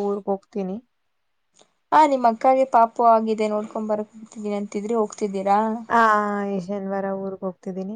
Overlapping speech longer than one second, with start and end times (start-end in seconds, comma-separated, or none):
none